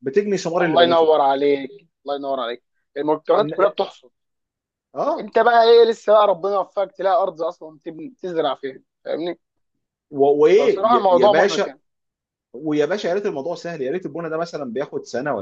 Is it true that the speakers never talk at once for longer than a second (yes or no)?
no